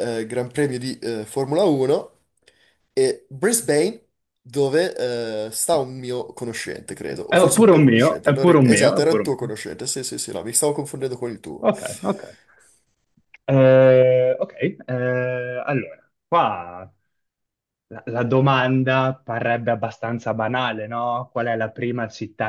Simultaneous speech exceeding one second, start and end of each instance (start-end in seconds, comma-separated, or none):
7.3-9.5